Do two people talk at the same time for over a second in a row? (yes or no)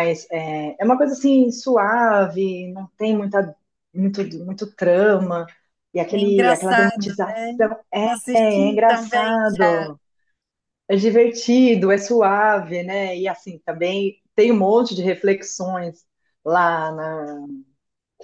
yes